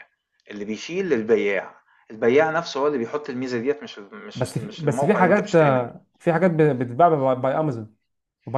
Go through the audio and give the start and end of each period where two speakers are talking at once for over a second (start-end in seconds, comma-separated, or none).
4.3-5.9